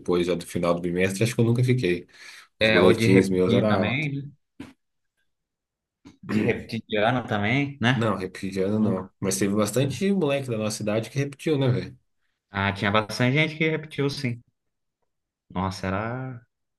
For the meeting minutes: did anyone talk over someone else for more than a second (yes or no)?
yes